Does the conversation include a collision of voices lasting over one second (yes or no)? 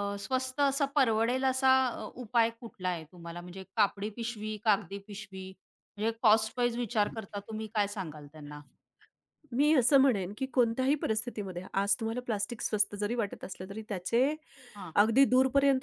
no